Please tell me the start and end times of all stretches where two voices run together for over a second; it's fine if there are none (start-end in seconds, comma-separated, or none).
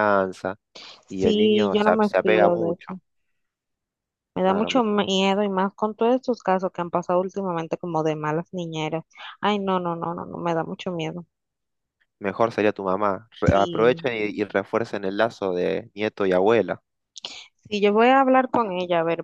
1.1-2.9